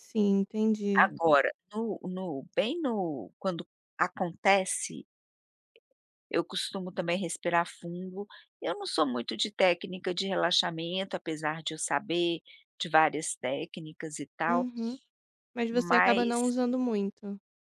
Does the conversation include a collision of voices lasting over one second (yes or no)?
no